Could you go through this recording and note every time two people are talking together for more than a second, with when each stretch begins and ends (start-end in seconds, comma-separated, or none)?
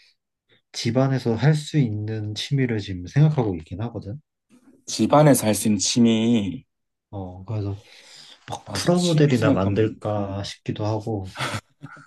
8.6-10.5